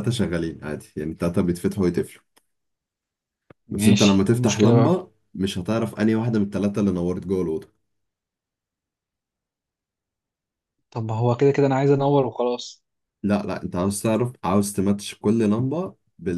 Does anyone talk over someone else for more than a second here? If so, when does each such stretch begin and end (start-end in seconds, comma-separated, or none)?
3.7-4.9